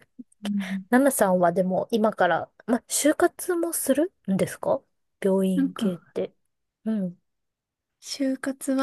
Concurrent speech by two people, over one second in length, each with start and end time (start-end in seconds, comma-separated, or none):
none